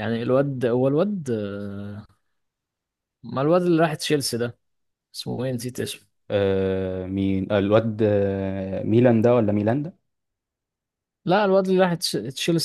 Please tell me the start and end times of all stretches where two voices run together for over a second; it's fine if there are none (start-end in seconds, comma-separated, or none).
none